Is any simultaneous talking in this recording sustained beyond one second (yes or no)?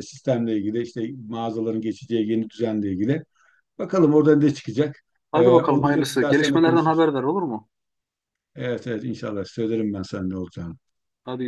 yes